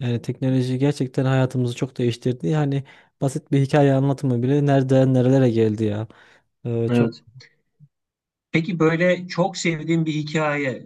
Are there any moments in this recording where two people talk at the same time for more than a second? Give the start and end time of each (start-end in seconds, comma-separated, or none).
none